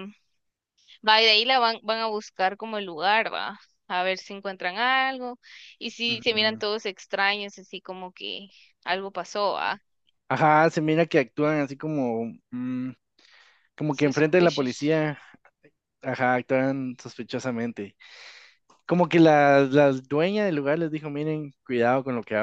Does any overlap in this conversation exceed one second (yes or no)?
yes